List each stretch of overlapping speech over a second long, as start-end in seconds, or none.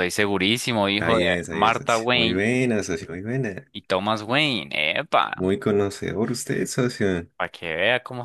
0.9-2.4